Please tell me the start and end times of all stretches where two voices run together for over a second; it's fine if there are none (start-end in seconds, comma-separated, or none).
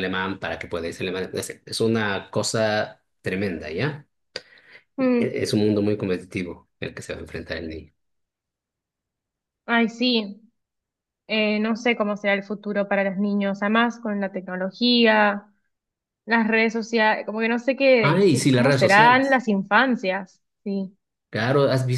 18.0-19.4